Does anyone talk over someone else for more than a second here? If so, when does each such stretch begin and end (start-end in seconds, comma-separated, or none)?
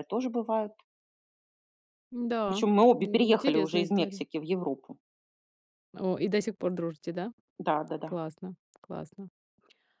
2.5-4.2